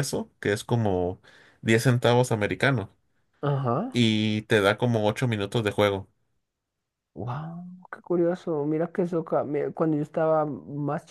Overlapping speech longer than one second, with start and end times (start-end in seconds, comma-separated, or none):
none